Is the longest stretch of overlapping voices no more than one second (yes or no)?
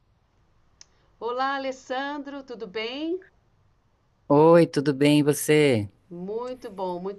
yes